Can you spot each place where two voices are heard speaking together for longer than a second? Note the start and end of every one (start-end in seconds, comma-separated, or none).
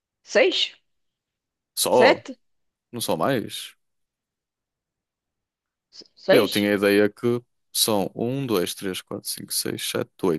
none